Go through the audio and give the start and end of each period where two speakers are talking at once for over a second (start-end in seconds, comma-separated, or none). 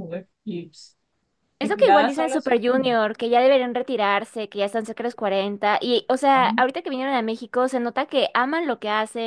1.6-2.9